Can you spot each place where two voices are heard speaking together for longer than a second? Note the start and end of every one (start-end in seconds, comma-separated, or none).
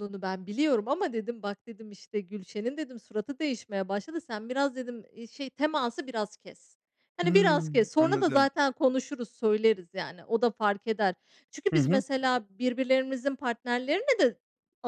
7.2-8.5